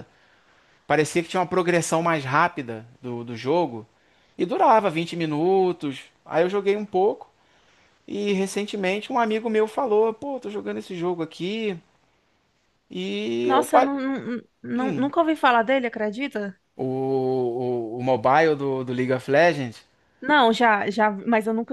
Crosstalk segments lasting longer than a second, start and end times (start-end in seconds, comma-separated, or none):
none